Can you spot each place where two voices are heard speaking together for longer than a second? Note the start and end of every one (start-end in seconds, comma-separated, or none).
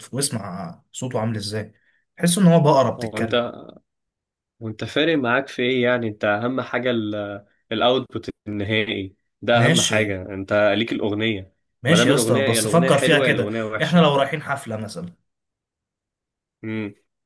11.8-14.0